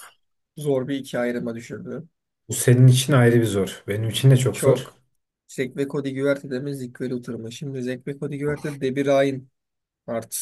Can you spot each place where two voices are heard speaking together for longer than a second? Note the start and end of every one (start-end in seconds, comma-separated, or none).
none